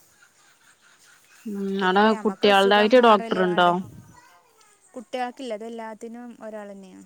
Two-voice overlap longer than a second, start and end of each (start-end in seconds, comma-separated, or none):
1.8-3.7